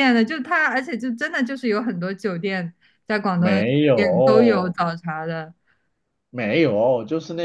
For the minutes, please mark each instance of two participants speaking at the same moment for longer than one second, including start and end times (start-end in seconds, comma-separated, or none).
3.3-4.8